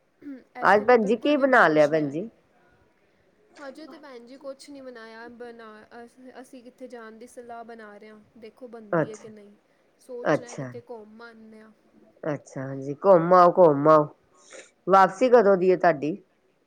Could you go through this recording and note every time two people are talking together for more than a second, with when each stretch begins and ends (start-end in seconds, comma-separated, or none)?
0.7-2.2